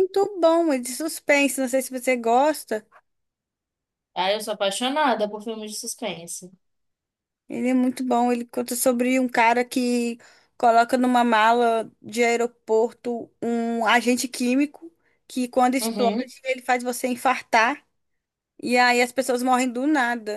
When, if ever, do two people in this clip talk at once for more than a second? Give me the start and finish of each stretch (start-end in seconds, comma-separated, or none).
none